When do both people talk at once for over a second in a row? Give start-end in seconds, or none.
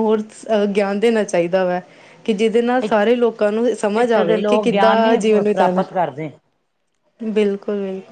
4.0-5.8